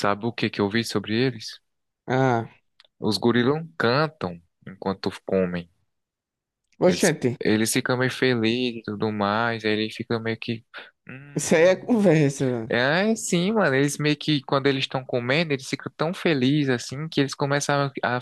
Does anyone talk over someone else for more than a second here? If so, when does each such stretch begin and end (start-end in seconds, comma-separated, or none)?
none